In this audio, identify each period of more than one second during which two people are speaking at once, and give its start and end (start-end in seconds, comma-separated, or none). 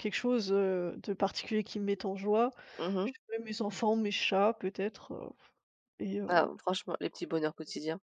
none